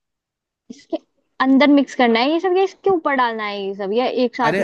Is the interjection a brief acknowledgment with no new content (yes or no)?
no